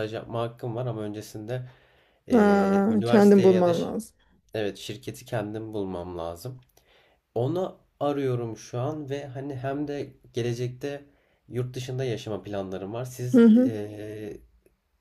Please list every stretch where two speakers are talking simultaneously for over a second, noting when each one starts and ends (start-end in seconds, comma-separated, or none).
2.3-4.0